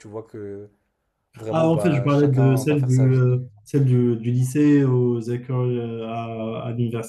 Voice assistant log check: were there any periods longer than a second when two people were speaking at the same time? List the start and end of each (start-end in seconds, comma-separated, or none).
1.5-3.4